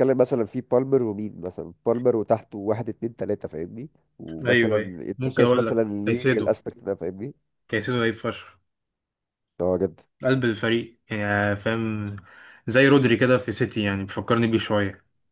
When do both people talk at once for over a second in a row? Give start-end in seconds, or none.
4.5-6.6